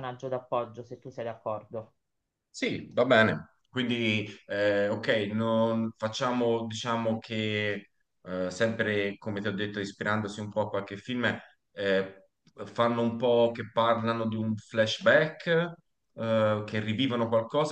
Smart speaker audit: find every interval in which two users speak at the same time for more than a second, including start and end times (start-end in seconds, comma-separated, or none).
none